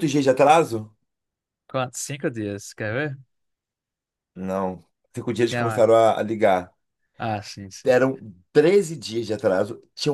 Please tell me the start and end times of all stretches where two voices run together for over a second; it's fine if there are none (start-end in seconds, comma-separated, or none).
none